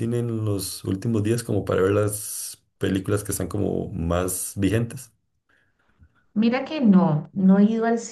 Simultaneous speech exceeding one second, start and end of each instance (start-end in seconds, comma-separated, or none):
none